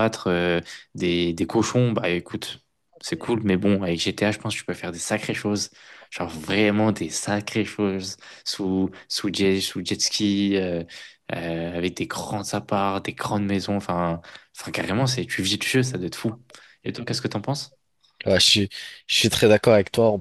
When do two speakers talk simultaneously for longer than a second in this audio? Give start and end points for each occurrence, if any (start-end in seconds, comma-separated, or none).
none